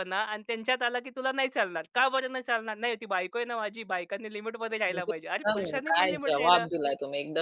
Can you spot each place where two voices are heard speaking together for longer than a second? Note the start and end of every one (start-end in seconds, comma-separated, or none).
4.9-6.7